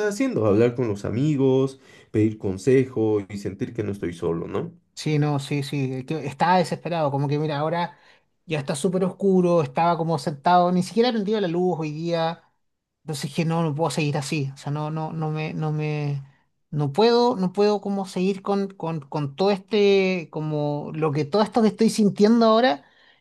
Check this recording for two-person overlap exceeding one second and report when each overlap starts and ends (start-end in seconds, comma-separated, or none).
none